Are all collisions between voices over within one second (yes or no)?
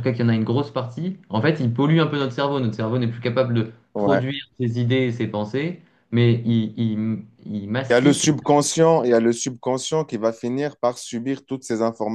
yes